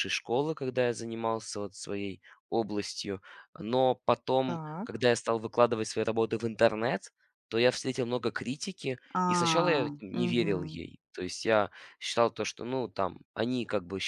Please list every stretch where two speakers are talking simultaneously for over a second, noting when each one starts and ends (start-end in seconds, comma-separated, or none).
9.2-10.8